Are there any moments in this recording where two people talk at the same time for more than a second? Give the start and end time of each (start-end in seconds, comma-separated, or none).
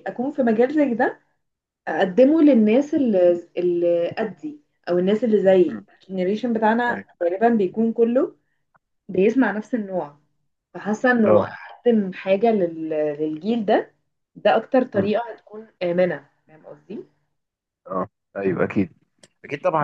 none